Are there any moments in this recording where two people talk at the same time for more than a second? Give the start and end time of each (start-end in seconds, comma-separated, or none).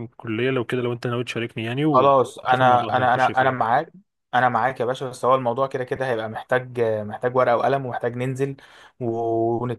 1.9-3.7